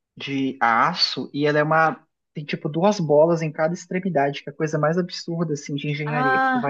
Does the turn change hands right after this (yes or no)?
yes